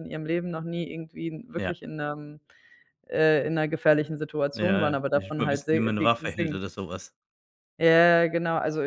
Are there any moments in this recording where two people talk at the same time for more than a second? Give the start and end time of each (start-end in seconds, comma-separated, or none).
4.5-6.6